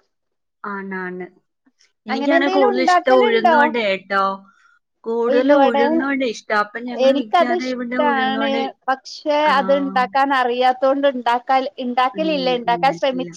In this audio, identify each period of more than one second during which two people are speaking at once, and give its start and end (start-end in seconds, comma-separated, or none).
7.0-8.5